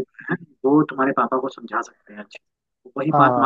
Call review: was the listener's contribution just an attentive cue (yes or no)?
yes